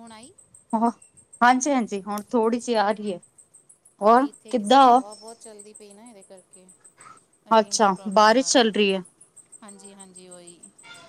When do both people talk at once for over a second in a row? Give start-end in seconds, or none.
none